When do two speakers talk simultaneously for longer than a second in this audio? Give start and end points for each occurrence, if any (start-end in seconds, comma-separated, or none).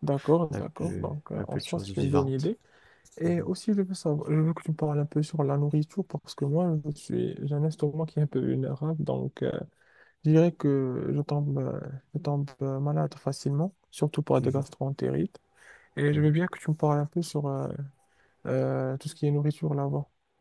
0.5-2.5